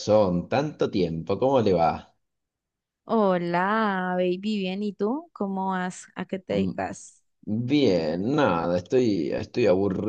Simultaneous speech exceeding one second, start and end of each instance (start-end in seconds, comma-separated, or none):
none